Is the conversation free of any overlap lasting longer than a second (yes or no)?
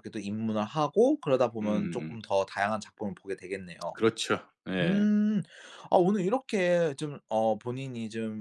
yes